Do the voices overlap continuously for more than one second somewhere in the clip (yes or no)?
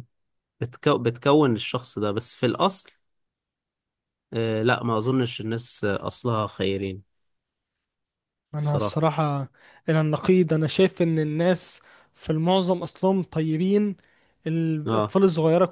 no